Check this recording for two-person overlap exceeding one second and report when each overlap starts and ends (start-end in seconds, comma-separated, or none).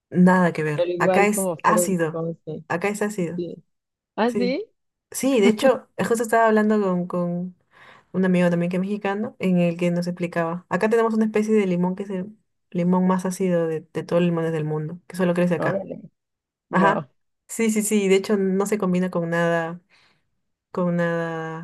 0.7-2.2